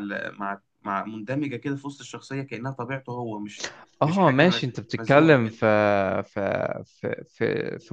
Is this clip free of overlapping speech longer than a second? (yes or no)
no